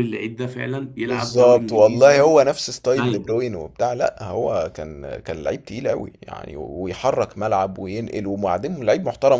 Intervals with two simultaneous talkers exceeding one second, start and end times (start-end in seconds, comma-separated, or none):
1.1-2.3